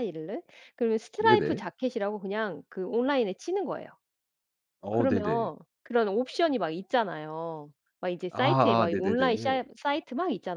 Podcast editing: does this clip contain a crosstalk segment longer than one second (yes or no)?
yes